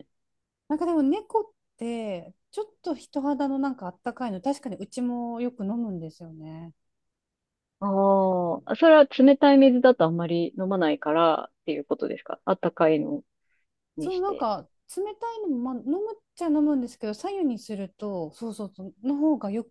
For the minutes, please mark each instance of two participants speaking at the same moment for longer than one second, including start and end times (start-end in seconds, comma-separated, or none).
none